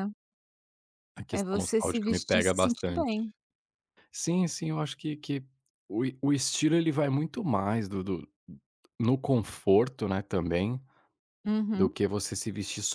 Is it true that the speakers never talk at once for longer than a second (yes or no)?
no